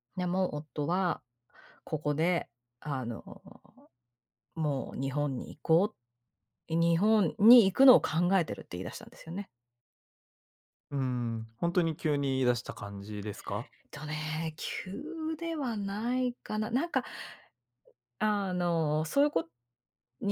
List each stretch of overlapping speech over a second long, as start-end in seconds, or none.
none